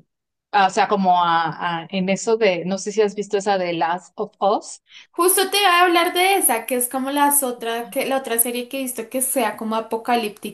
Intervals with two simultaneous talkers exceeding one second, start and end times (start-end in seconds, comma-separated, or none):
none